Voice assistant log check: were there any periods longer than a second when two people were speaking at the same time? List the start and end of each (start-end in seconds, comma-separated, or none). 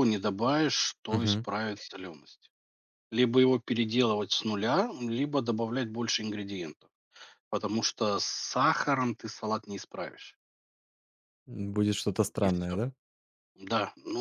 none